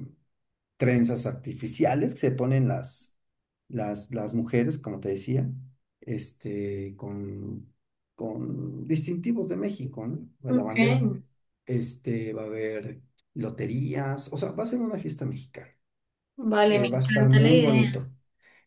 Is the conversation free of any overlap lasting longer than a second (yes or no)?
no